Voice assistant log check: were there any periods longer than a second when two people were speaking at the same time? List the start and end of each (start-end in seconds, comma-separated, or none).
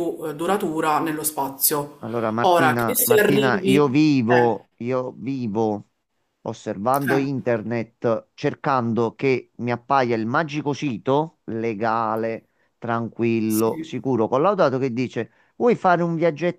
2.4-4.6